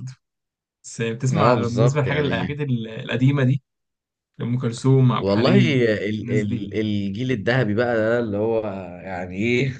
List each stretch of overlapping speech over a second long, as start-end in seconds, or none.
1.3-2.5